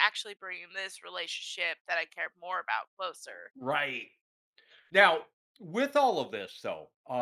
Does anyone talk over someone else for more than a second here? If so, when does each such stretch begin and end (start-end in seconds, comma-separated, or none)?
none